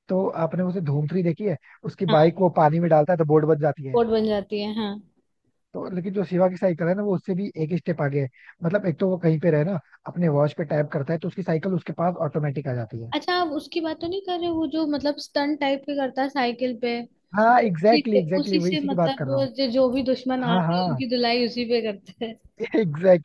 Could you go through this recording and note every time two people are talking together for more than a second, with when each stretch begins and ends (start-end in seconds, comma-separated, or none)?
17.6-19.5